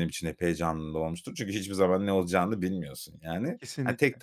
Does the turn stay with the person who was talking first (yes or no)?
yes